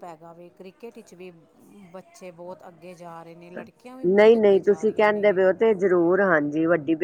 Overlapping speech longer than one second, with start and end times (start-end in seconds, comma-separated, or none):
4.1-5.4